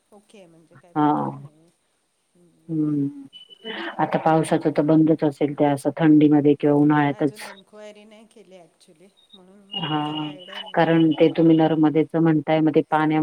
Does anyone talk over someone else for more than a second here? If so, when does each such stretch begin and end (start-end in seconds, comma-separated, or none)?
none